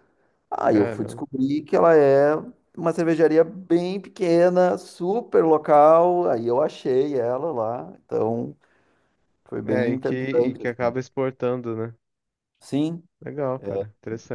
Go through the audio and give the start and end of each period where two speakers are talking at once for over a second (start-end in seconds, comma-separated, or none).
9.7-10.9